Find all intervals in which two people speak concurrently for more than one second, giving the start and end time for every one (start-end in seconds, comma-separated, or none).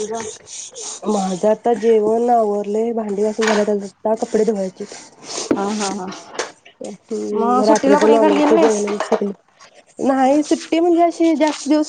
7.3-8.8